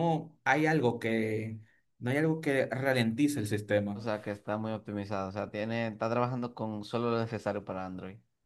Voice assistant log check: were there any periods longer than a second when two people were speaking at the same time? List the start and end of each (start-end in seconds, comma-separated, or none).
none